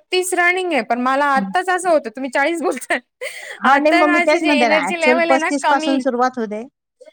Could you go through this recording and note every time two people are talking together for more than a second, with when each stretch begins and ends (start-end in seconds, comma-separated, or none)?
3.7-5.9